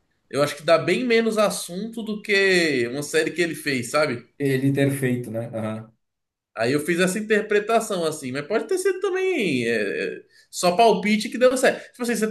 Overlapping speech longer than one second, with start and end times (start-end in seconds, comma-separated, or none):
none